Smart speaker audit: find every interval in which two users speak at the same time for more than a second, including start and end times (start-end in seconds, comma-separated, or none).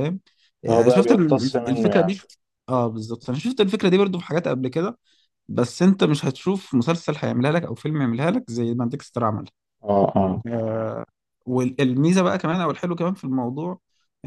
0.7-2.1